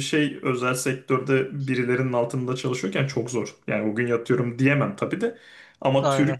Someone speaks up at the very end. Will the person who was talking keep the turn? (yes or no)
yes